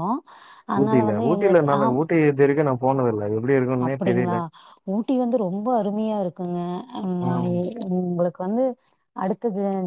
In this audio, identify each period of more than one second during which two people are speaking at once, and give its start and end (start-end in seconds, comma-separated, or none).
none